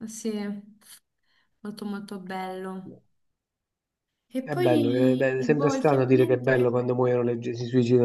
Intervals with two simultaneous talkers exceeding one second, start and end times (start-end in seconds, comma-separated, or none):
4.4-6.6